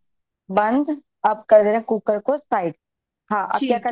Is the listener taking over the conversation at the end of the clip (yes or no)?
yes